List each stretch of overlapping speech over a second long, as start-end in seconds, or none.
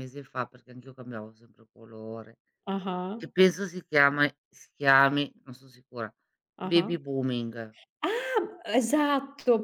none